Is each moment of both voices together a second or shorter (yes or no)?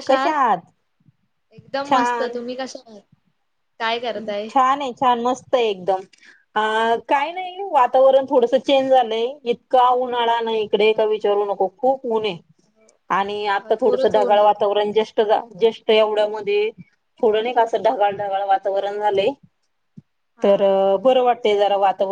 no